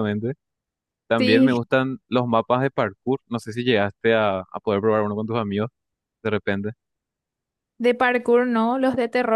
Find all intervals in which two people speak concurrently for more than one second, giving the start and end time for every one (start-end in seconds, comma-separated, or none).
none